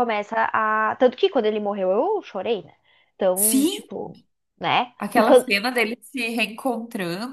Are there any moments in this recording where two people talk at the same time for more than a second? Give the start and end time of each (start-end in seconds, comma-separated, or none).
none